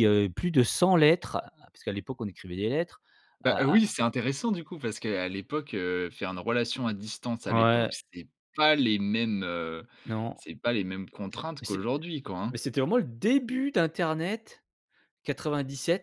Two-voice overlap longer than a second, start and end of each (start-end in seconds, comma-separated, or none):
none